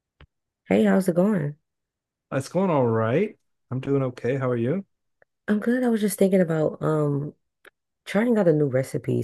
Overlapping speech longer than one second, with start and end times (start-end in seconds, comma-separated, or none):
none